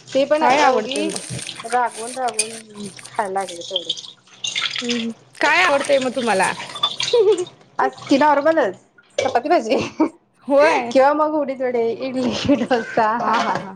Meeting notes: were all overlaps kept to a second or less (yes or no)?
yes